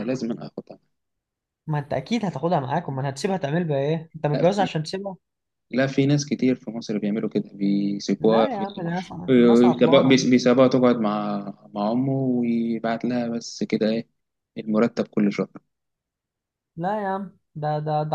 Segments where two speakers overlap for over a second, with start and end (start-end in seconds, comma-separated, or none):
none